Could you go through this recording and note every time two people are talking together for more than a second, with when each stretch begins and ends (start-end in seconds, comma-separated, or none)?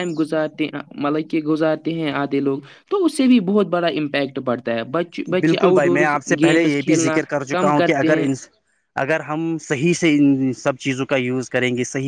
5.4-8.3